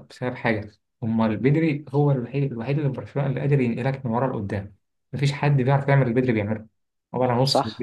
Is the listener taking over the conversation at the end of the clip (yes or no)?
yes